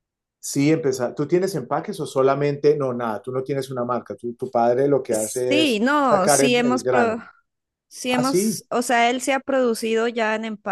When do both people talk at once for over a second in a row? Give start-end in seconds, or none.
5.1-7.2